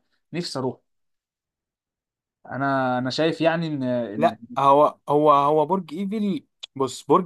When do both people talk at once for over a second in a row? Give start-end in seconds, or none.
none